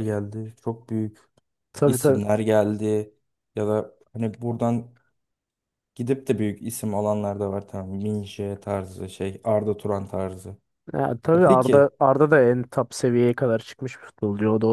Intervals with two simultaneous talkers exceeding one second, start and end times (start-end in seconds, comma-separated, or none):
none